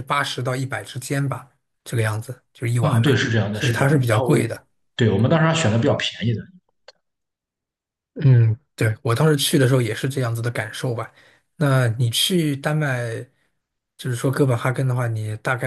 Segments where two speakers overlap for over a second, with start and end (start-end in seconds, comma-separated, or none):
2.8-4.5